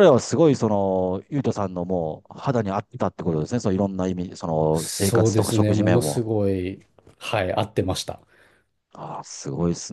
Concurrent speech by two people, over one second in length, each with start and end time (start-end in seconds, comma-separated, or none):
4.7-6.2